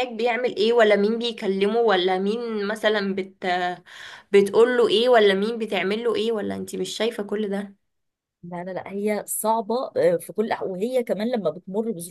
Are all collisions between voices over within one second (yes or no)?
yes